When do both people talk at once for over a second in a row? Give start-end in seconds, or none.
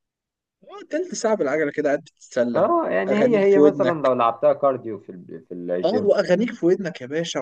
2.5-4.1